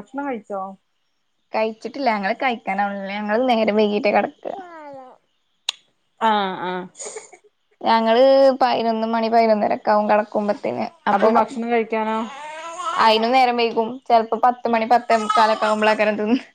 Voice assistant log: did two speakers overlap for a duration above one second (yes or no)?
no